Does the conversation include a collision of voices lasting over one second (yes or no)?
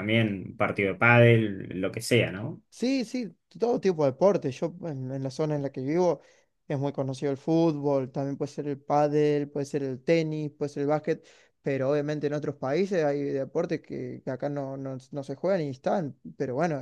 no